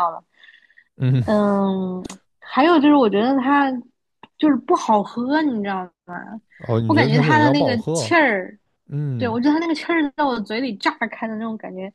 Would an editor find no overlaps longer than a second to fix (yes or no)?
no